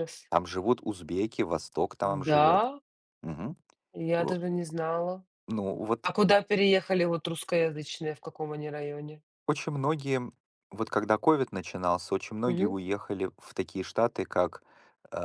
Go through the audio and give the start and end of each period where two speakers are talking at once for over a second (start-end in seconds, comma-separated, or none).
none